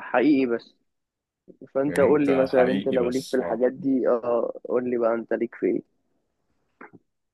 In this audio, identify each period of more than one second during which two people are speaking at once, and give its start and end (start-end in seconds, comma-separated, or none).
1.9-3.6